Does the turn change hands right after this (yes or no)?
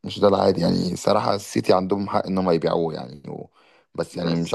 no